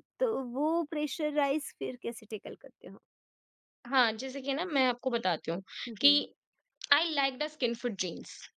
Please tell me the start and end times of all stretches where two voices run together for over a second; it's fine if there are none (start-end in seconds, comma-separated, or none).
none